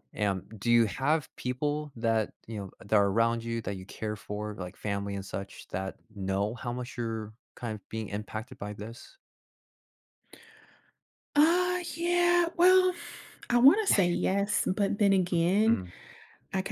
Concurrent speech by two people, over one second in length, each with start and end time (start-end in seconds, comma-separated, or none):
none